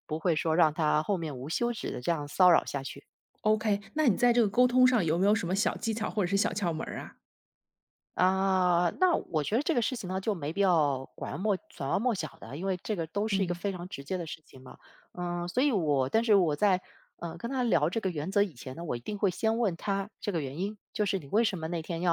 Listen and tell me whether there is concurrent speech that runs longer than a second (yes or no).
no